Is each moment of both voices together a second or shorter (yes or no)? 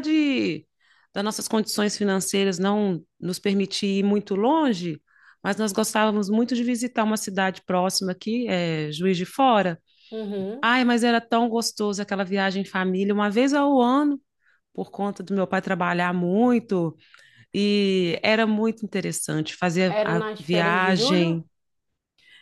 no